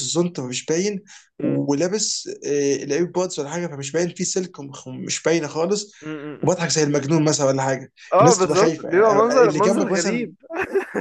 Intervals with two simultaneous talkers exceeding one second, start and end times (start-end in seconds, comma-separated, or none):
8.1-10.3